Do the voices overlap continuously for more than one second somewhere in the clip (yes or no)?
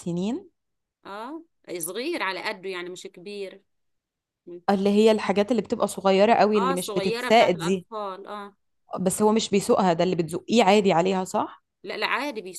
yes